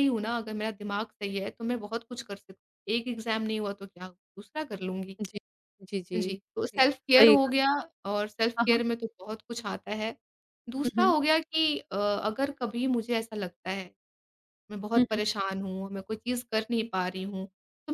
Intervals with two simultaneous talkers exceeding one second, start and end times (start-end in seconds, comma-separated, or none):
6.1-7.5